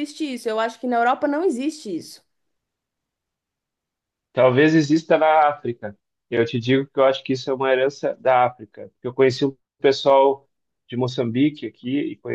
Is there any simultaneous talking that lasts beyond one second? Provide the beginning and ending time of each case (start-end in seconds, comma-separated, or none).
none